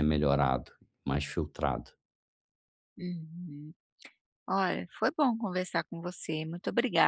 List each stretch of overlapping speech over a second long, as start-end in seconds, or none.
none